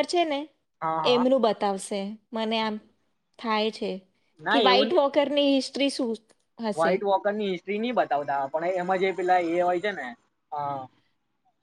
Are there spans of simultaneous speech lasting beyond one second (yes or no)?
no